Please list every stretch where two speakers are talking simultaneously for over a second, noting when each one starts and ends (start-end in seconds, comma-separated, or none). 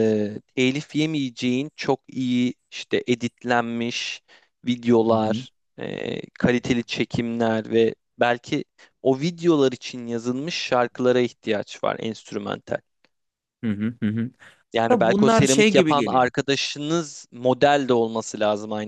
14.9-16.3